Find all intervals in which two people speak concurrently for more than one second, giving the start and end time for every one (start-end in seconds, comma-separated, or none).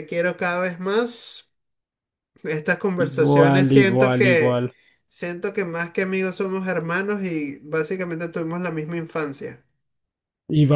3.1-4.7